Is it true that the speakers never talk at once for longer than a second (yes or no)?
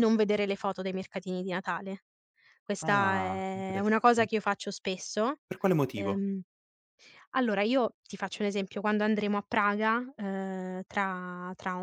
no